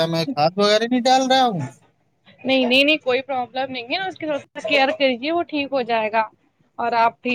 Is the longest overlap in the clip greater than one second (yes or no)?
no